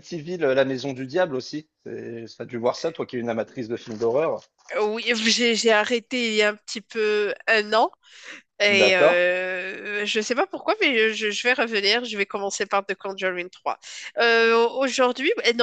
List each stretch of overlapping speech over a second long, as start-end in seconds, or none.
none